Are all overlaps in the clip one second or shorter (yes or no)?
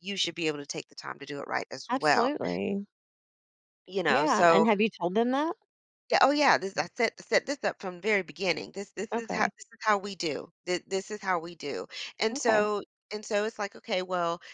yes